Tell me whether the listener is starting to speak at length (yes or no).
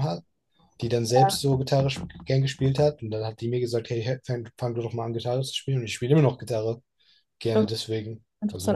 yes